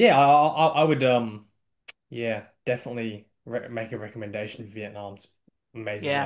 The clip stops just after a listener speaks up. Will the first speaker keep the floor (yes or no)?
no